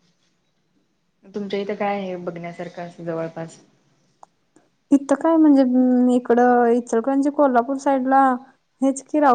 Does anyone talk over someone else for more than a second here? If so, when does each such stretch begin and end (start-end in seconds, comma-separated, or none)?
none